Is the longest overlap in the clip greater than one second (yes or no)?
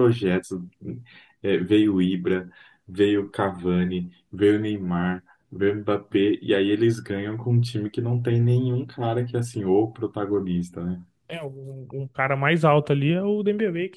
no